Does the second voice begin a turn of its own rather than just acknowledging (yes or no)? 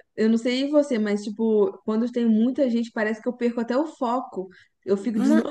yes